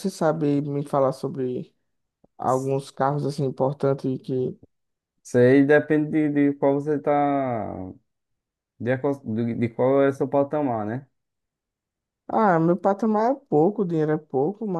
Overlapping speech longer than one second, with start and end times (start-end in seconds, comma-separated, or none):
none